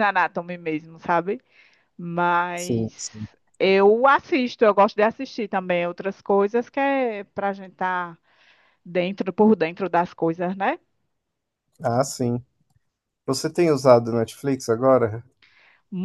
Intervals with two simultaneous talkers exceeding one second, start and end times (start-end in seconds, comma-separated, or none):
none